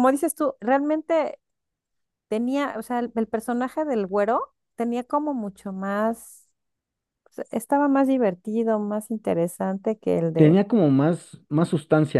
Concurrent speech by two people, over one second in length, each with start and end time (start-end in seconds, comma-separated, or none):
none